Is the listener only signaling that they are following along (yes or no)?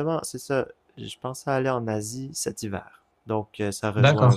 yes